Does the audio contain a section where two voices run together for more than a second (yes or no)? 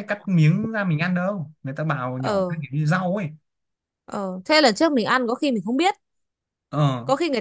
no